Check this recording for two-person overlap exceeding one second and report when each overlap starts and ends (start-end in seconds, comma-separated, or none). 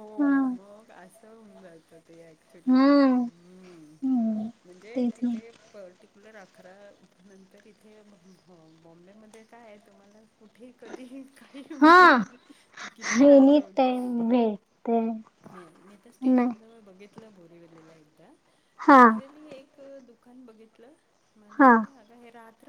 none